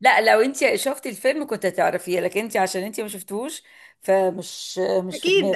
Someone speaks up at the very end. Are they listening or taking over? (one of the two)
taking over